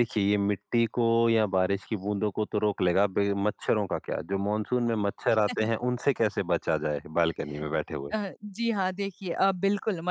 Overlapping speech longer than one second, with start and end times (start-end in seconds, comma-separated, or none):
none